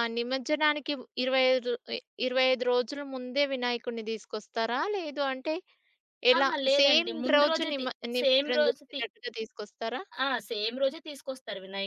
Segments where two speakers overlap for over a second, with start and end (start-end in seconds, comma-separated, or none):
6.4-9.0